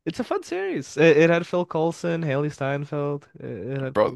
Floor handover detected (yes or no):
yes